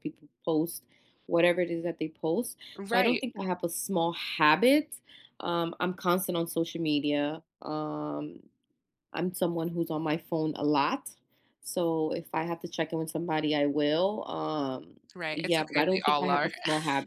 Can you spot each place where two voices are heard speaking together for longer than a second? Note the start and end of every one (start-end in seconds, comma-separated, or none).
15.2-16.5